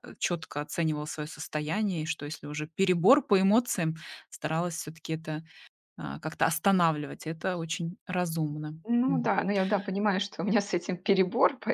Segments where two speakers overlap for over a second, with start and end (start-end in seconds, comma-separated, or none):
none